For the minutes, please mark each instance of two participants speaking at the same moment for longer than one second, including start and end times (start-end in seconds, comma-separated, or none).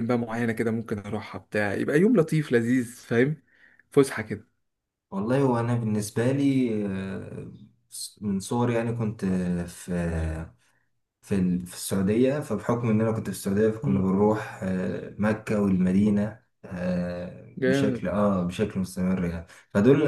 none